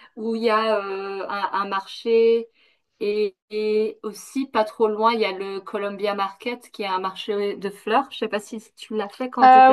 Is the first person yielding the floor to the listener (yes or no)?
yes